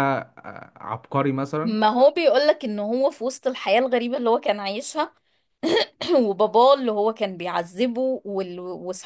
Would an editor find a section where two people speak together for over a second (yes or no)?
no